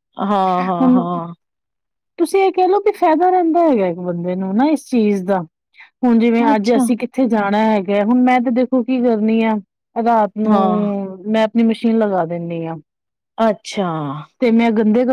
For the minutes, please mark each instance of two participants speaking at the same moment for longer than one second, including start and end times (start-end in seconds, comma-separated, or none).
none